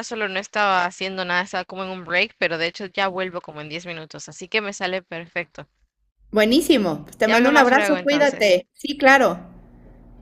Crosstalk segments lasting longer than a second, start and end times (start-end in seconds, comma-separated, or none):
7.2-8.6